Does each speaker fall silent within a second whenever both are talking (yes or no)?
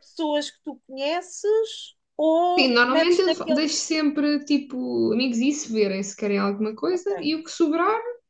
no